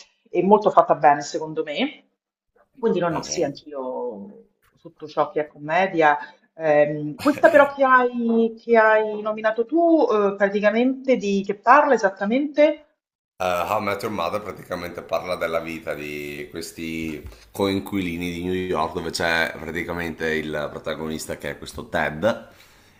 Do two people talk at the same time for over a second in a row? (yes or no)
no